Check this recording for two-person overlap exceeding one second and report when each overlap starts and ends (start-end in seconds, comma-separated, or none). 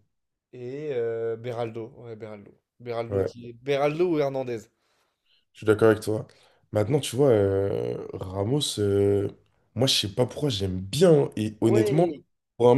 none